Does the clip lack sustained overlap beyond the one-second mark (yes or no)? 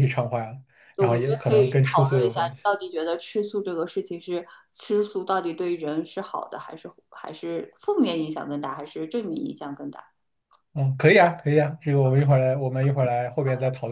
no